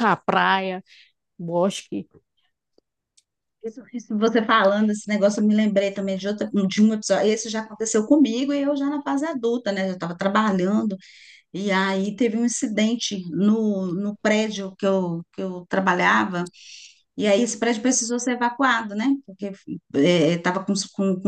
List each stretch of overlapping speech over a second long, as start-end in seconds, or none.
none